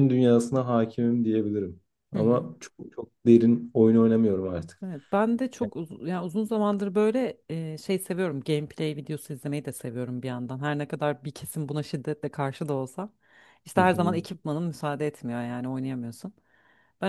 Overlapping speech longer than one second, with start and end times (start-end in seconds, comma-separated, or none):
none